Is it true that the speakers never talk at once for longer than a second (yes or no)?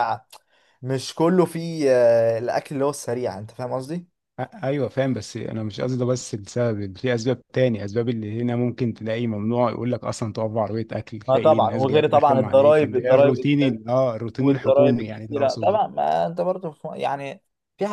no